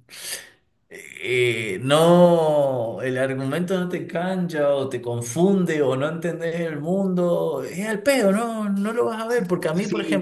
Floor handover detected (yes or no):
yes